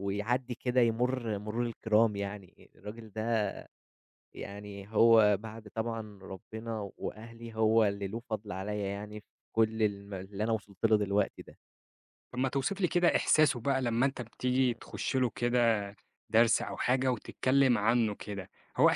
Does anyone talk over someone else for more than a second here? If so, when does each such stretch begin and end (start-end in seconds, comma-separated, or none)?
none